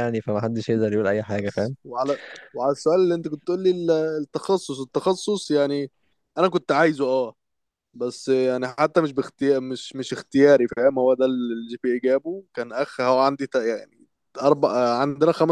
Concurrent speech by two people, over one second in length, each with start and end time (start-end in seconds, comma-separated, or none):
none